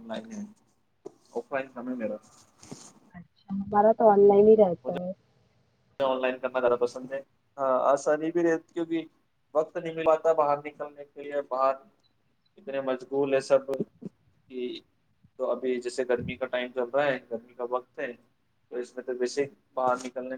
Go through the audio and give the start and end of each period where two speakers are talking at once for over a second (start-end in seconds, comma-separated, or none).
none